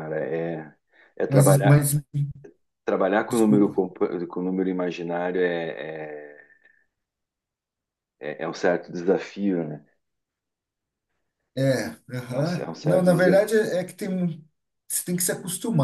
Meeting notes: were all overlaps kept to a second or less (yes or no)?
no